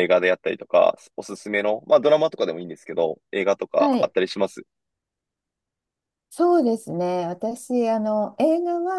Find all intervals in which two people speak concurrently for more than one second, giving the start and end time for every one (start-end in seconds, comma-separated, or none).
none